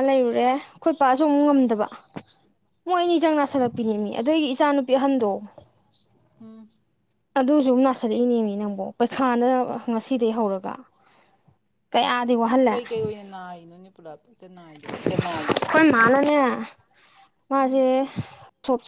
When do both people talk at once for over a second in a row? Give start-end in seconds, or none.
none